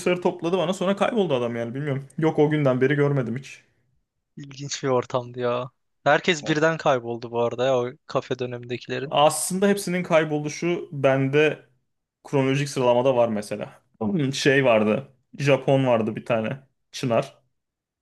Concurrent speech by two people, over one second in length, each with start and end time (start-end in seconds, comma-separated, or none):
none